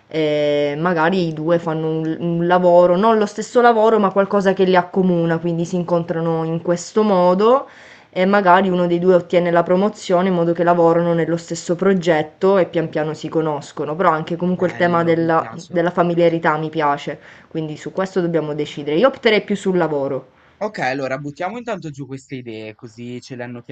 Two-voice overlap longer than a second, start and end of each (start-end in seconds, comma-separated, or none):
14.5-15.8